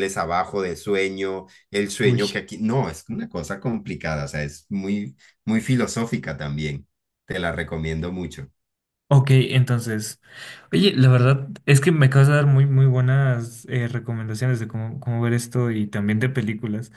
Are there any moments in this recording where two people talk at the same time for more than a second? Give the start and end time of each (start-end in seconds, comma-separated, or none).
none